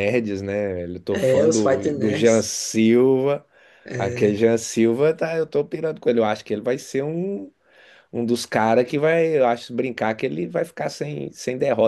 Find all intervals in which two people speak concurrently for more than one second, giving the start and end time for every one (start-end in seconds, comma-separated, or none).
1.1-2.5